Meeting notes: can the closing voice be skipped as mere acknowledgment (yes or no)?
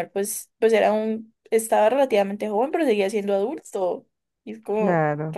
no